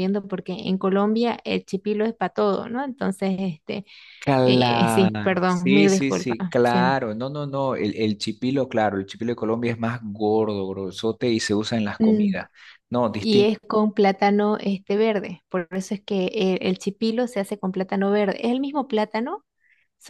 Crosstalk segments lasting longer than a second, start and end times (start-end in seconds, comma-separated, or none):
4.4-6.8